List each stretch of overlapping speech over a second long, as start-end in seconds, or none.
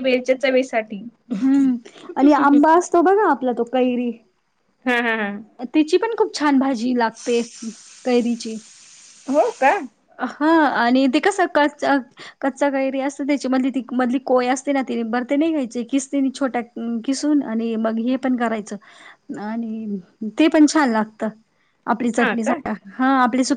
none